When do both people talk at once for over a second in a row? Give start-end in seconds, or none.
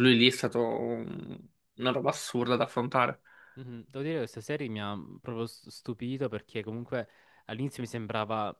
none